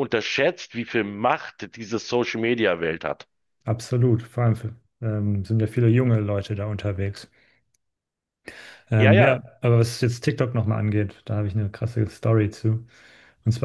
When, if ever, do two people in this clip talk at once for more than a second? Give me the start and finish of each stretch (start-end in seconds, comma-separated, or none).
none